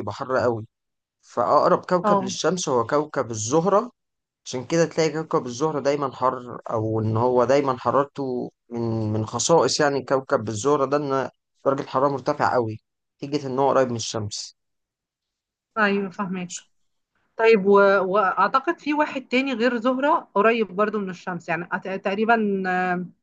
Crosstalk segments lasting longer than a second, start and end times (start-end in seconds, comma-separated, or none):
none